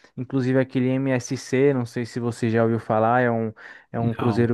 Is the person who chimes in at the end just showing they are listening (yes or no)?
yes